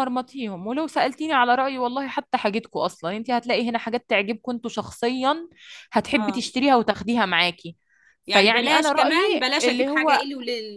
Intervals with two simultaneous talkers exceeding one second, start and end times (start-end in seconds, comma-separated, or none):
8.3-10.2